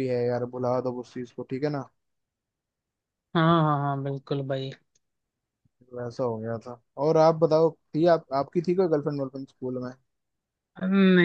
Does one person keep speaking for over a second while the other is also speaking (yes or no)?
no